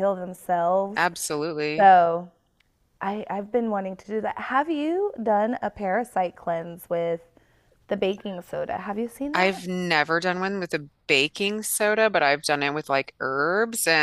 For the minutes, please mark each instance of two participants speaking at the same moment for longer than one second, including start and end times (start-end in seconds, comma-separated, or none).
none